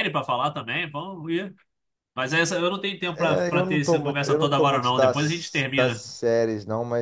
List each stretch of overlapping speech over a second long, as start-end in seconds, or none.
3.1-6.0